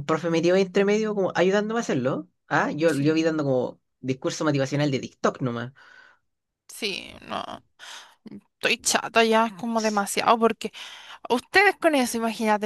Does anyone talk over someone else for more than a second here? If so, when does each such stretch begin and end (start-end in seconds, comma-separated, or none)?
none